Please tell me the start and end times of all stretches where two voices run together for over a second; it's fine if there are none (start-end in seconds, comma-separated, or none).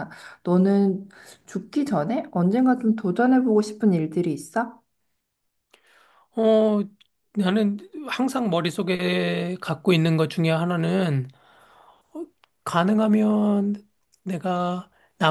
none